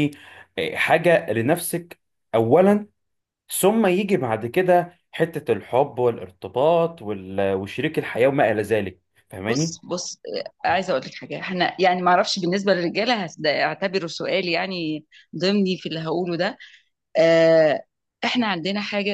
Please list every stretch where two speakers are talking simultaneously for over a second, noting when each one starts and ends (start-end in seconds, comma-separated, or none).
none